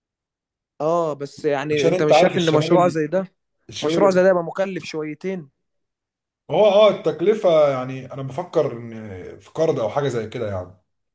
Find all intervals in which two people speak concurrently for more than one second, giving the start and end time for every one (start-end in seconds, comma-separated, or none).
1.7-3.0